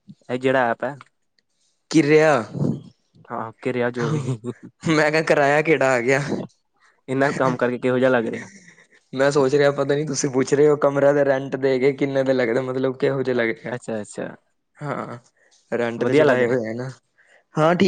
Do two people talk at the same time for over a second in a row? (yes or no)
no